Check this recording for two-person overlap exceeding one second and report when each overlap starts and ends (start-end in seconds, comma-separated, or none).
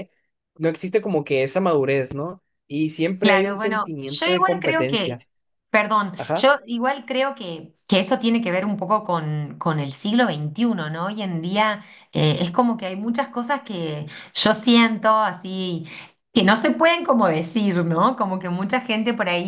3.2-5.1